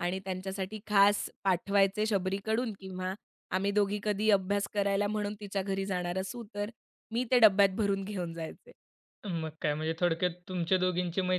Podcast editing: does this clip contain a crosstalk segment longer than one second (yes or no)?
no